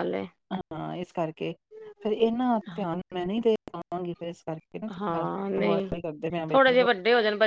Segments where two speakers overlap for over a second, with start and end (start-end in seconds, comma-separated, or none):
none